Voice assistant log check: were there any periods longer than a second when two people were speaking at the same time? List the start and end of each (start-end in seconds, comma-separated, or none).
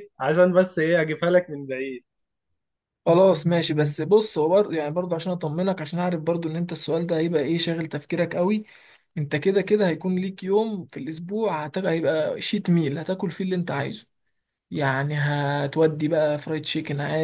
none